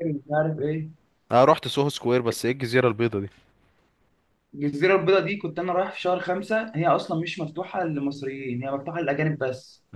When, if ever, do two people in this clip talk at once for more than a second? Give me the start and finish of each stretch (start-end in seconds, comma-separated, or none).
none